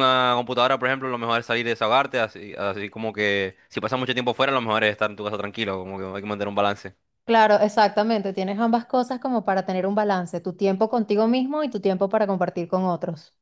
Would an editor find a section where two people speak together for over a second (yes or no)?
no